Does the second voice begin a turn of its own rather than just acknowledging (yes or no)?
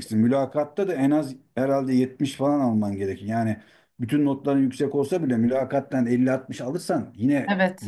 yes